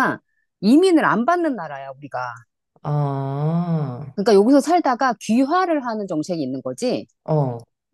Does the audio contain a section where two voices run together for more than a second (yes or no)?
no